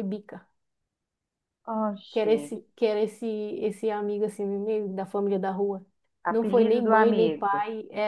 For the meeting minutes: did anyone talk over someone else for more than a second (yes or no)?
yes